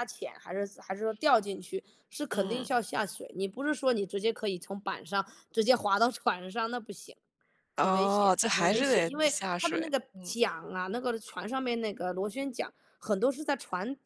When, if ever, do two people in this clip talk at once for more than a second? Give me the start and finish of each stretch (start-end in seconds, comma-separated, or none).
7.8-10.3